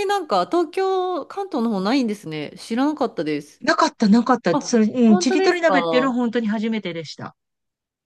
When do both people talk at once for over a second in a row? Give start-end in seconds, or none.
4.5-6.2